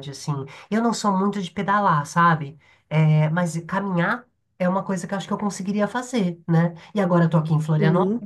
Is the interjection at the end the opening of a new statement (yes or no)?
no